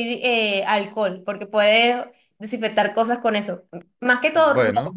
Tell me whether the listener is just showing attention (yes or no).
yes